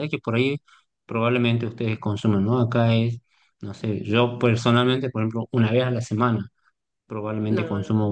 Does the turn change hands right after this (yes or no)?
no